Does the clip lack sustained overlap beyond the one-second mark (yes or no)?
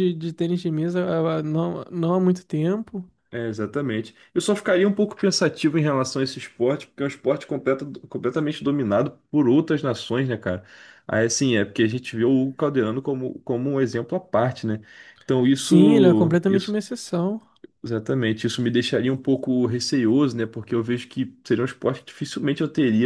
no